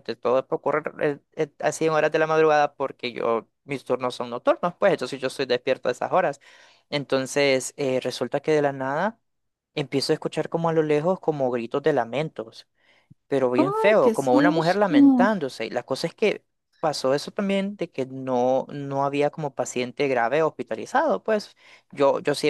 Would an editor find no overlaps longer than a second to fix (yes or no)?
no